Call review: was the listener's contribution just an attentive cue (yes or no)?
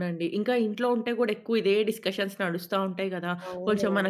yes